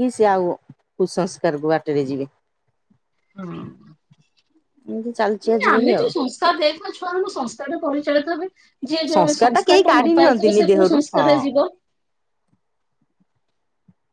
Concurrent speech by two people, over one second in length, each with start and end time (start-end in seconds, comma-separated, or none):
9.1-11.4